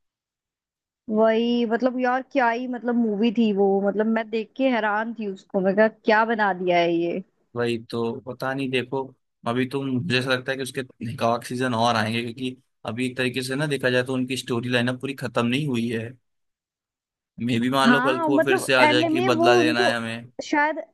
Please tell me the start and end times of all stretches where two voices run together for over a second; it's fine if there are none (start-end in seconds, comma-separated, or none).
17.8-20.0